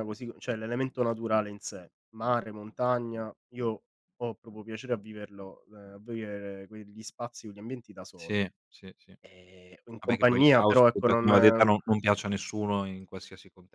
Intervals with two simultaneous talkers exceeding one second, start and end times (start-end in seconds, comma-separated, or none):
10.0-11.3